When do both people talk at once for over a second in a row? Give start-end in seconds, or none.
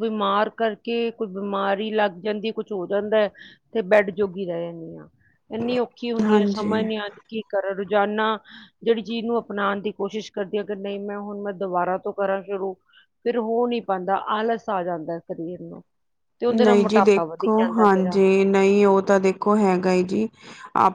16.5-18.2